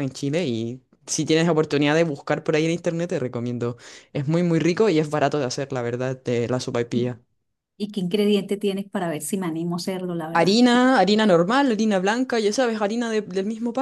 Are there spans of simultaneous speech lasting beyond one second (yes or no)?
no